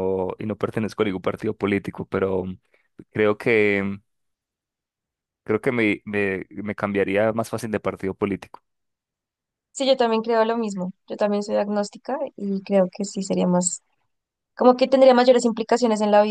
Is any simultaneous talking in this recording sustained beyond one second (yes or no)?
no